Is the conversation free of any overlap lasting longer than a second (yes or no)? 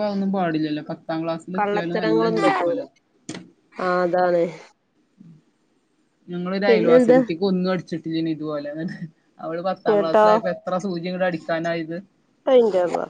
no